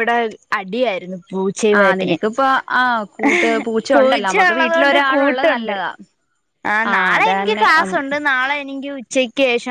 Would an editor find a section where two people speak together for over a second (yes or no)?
yes